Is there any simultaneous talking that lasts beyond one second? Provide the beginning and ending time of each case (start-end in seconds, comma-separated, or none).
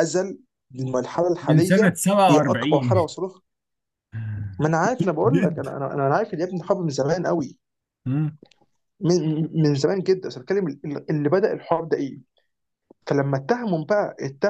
1.4-3.1